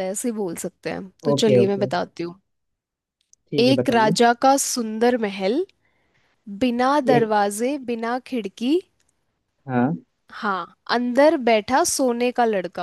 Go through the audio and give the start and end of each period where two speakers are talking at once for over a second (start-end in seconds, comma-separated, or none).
none